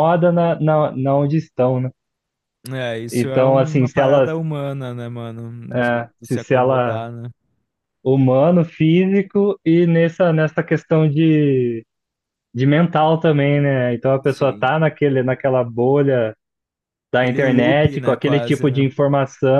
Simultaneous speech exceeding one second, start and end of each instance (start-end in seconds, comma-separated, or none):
3.1-4.3, 5.7-7.1, 17.2-18.9